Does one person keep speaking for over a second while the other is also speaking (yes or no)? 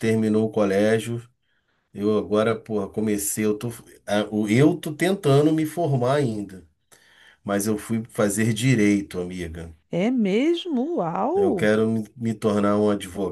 no